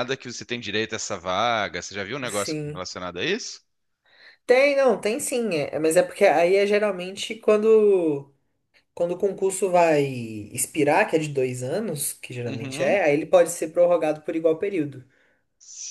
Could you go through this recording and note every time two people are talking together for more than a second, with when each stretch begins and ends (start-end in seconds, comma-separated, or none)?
none